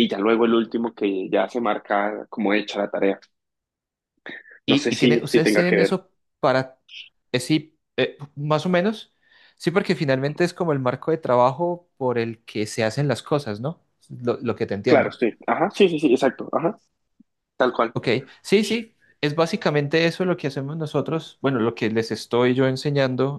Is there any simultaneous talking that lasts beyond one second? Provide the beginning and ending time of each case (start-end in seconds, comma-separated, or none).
4.7-6.0